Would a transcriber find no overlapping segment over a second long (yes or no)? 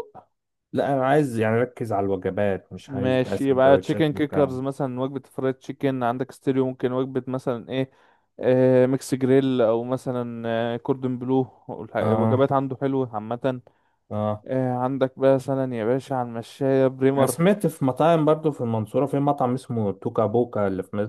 no